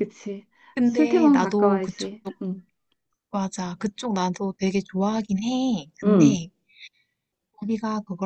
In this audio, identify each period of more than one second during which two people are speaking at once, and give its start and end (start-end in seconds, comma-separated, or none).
0.8-2.1